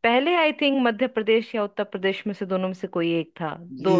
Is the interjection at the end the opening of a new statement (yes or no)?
yes